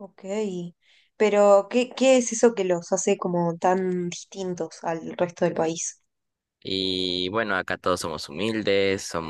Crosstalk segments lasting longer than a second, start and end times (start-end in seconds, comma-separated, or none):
none